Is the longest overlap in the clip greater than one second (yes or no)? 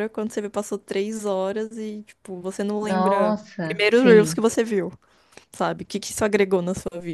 yes